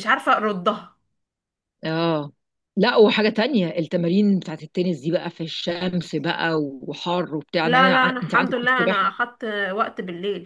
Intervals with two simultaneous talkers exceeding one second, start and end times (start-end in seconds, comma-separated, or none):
7.6-9.1